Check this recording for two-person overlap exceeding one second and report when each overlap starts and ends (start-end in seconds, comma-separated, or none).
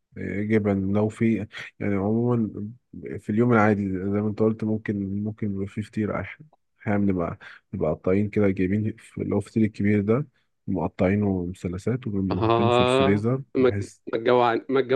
12.3-13.7